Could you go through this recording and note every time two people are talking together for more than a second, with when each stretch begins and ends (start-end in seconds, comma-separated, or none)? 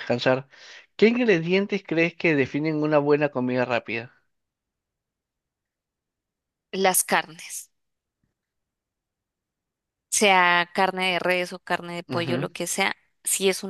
none